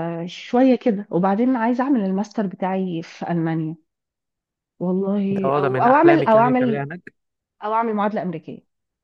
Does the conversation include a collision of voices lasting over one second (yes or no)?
yes